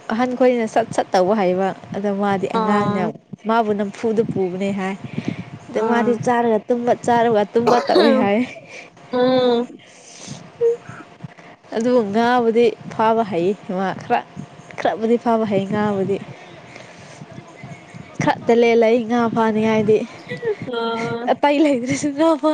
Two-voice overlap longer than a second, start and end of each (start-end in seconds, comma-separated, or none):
none